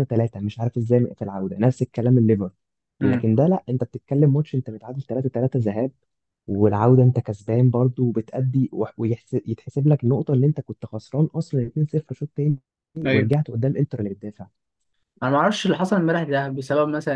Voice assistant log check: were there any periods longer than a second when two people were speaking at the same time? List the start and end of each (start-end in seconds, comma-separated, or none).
none